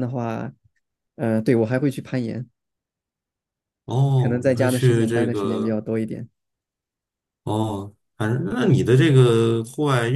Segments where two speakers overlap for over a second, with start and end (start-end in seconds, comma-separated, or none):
4.2-5.8